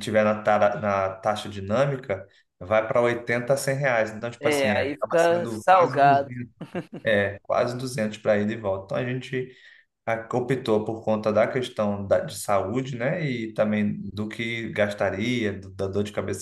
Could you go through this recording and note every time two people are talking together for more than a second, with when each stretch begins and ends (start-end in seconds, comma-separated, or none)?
4.4-6.3